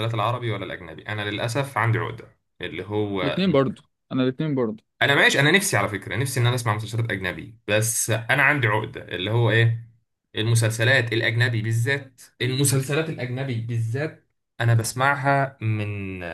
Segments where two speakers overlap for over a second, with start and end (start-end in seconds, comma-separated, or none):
none